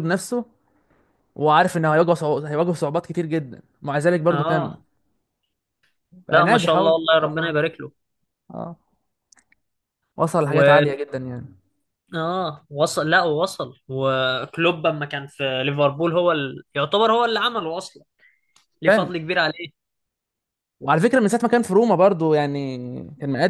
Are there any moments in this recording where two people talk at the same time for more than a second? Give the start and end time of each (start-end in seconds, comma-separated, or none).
6.3-7.6